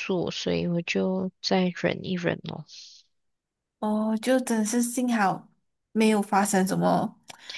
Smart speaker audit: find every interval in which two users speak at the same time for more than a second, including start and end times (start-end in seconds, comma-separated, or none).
none